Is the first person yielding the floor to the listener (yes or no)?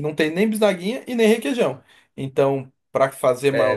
yes